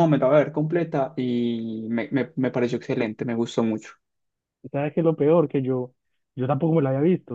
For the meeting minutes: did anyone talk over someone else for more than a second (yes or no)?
no